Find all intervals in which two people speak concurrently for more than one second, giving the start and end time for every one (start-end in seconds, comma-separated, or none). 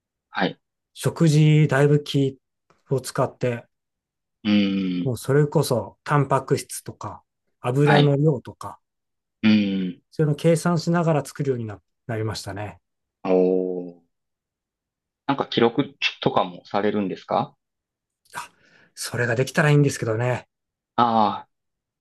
none